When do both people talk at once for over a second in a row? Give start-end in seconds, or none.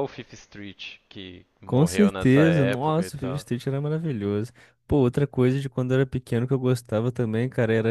1.6-3.5